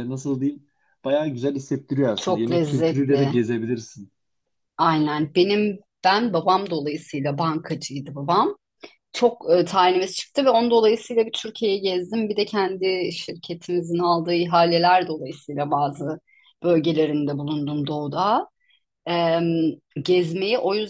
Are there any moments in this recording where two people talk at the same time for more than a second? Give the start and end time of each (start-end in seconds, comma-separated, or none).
2.2-3.4